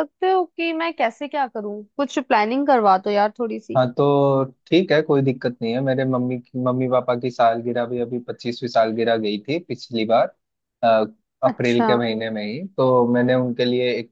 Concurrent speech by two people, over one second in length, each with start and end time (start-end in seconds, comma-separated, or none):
none